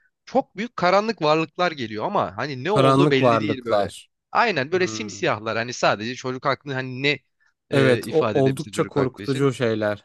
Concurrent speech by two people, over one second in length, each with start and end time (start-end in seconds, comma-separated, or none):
2.7-3.9, 7.7-9.5